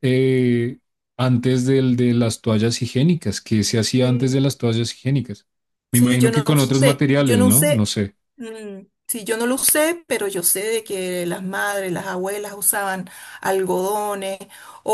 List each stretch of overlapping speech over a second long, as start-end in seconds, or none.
5.9-7.9